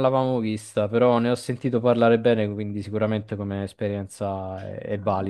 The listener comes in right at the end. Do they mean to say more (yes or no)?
yes